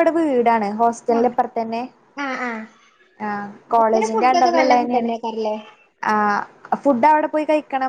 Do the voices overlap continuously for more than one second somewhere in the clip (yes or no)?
yes